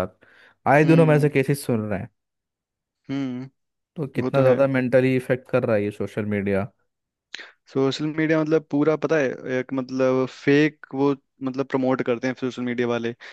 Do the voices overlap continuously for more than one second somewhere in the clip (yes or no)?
no